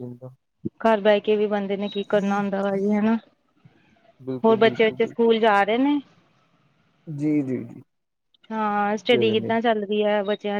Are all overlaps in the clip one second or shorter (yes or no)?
yes